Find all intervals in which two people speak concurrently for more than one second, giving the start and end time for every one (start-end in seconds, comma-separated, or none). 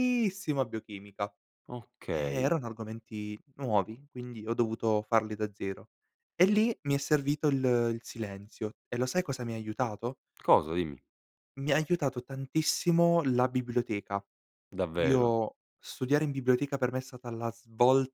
none